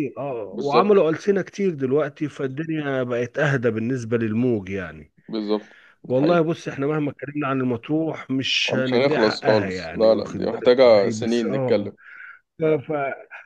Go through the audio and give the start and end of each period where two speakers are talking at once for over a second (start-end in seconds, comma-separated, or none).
8.7-11.9